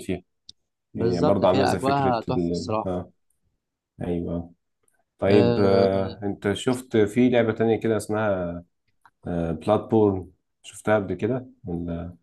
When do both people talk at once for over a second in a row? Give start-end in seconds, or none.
0.9-2.9